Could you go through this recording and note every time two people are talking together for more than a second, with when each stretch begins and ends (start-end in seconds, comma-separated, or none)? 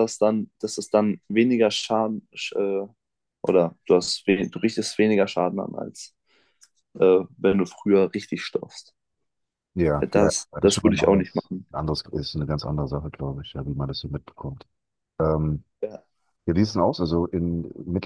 10.1-11.7